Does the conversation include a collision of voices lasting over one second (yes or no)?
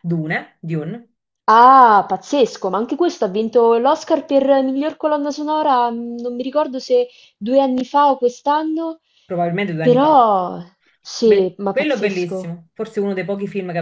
yes